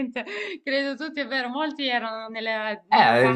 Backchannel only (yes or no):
yes